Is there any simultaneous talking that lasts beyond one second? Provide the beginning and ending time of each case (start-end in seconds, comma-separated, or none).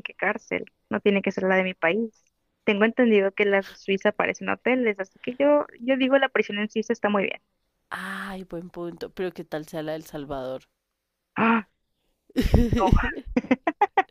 none